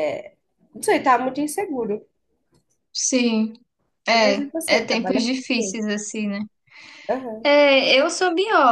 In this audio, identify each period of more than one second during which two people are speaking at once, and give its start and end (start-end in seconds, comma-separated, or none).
4.2-5.8